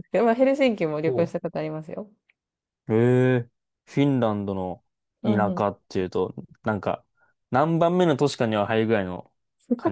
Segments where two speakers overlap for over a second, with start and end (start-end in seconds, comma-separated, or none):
none